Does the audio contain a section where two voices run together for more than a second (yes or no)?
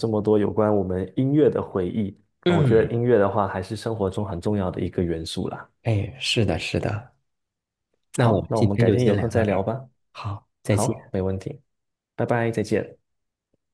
yes